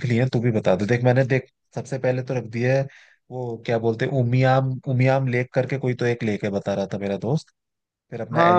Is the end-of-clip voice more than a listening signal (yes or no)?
yes